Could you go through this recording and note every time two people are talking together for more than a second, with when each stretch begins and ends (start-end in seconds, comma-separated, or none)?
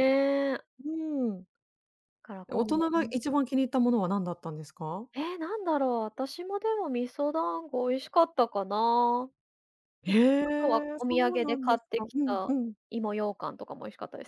10.4-12.5